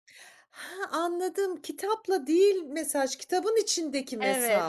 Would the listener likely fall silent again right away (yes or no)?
no